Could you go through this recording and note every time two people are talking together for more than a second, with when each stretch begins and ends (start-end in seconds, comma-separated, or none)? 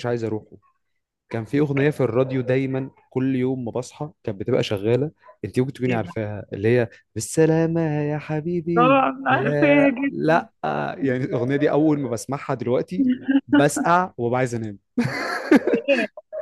8.8-10.4